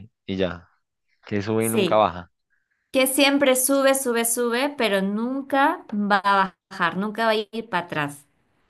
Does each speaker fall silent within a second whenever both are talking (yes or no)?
yes